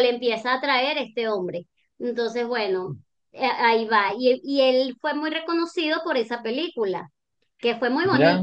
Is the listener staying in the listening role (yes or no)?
yes